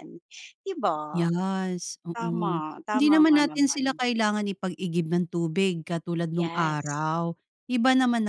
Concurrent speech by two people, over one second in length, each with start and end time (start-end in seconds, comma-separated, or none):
2.1-4.0